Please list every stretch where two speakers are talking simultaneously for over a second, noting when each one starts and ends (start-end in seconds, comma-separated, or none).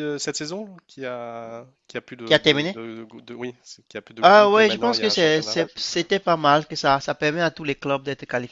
4.2-5.6